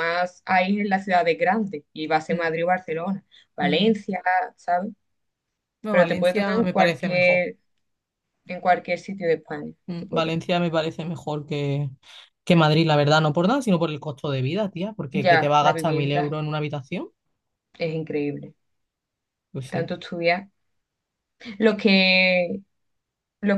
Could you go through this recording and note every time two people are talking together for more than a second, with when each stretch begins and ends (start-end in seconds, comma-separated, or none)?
5.9-7.5, 15.1-16.4